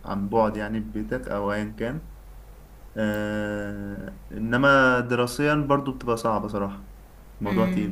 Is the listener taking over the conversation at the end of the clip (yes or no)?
yes